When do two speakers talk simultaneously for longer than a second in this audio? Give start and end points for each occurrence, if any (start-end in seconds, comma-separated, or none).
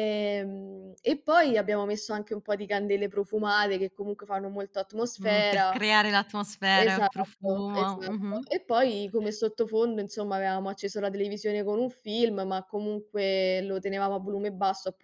6.8-8.5